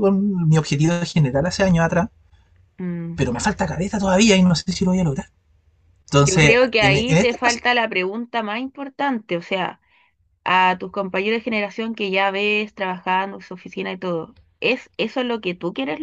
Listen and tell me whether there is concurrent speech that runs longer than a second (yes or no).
yes